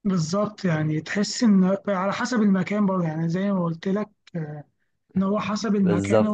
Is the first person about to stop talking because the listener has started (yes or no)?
no